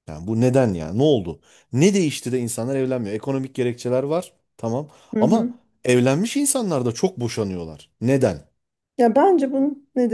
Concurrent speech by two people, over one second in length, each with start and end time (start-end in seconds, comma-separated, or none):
none